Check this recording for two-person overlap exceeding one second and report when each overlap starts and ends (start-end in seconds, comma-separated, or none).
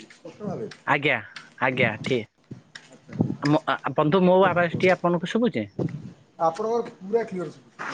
none